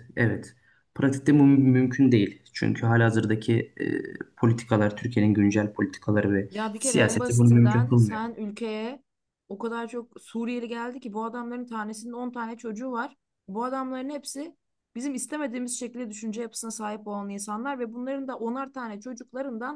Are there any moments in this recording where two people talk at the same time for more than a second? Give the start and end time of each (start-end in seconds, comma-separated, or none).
6.5-8.2